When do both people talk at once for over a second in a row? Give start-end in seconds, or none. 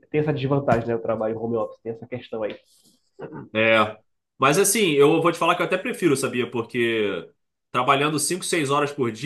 none